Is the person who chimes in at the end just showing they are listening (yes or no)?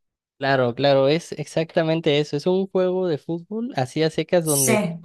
yes